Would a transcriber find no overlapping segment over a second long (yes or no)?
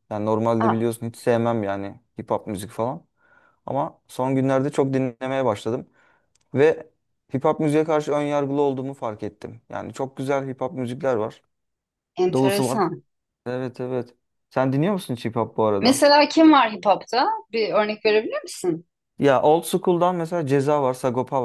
yes